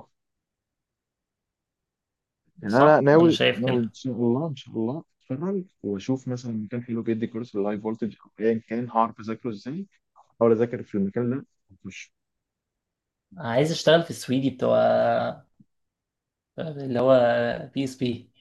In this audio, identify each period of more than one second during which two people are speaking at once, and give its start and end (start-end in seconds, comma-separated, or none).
2.7-3.9